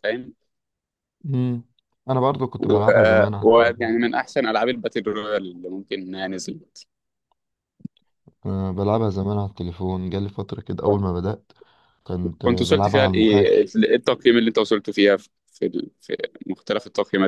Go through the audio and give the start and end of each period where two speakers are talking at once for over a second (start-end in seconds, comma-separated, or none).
2.6-4.0, 12.4-13.7